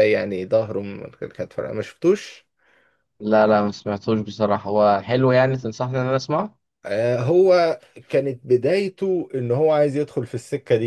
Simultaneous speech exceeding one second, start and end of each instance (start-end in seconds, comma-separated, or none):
none